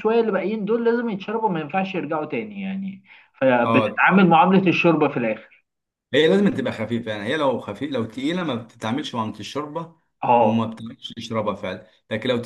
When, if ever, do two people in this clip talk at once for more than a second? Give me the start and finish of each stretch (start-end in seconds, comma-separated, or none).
none